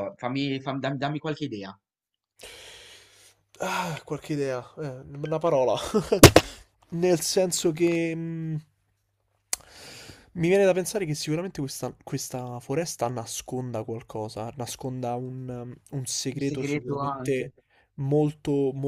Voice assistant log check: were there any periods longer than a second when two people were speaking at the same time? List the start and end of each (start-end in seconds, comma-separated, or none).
16.3-17.5